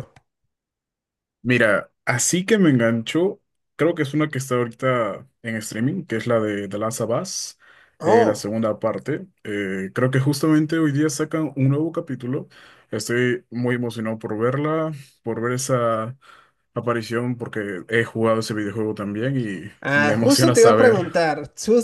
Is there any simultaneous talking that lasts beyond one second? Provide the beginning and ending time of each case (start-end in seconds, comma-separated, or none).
19.8-21.1